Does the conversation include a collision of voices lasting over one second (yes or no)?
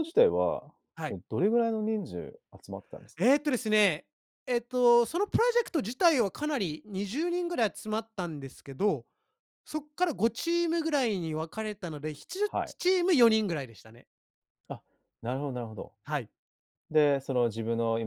no